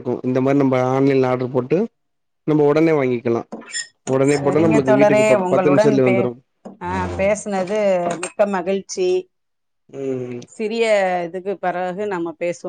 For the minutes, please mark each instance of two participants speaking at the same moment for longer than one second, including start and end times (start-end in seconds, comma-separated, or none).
4.3-6.1